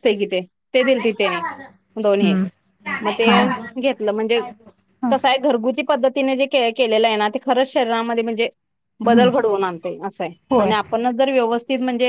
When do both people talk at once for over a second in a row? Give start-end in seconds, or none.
none